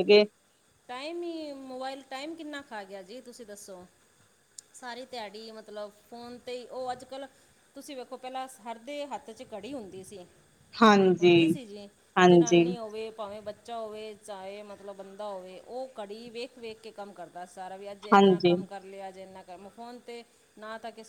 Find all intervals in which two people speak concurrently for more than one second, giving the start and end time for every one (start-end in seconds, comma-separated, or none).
none